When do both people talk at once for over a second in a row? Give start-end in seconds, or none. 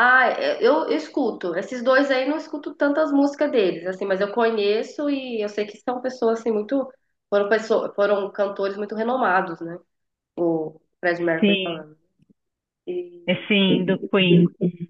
none